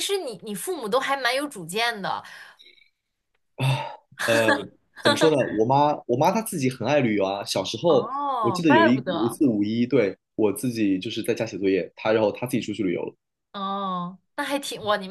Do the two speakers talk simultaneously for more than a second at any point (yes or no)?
yes